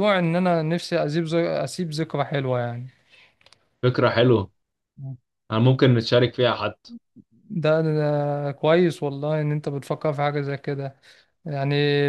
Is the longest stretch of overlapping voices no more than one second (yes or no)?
yes